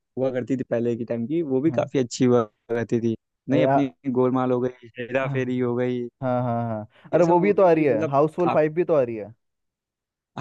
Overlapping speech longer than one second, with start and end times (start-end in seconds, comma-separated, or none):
7.1-8.6